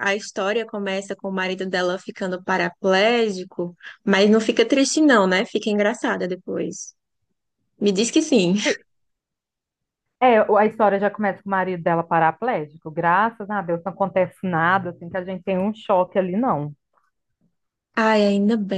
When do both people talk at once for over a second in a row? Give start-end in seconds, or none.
none